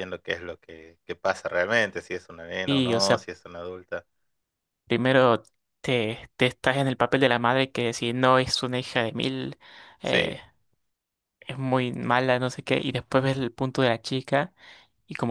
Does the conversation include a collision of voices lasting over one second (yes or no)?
no